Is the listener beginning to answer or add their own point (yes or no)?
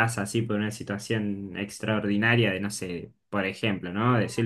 no